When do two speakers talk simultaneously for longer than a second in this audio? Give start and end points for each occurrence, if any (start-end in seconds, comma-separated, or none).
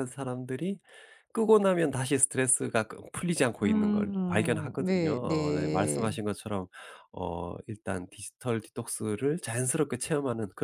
3.6-6.2